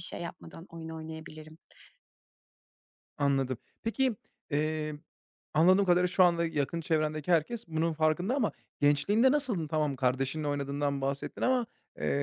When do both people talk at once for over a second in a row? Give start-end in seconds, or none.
none